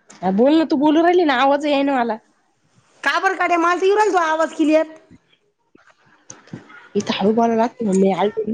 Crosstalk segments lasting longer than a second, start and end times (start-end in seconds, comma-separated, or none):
none